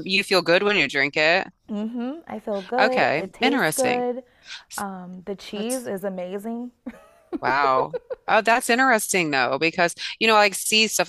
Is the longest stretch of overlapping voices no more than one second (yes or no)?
no